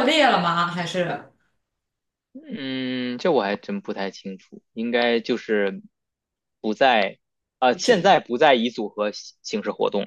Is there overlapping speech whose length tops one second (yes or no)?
no